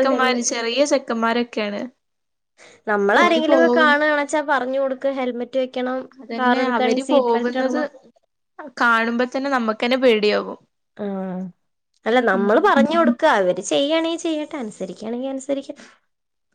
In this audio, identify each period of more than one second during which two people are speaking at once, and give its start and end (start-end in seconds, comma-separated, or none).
6.4-7.8